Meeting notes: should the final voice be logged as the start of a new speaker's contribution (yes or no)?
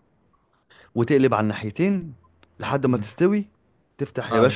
no